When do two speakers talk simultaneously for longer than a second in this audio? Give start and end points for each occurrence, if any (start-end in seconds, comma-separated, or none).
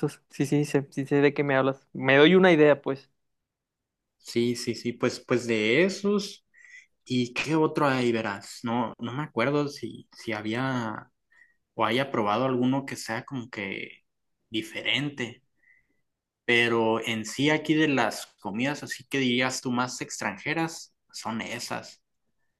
none